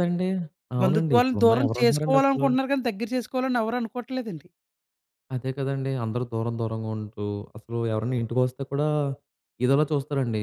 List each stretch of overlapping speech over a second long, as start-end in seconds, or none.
0.8-2.5